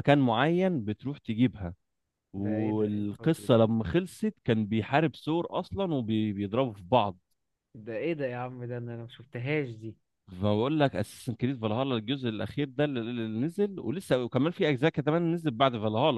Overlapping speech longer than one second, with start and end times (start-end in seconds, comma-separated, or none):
2.4-3.6